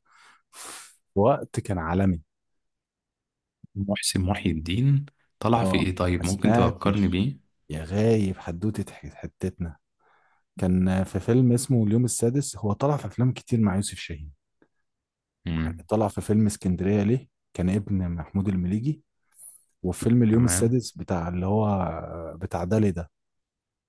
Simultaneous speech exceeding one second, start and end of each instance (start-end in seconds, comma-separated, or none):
5.6-7.2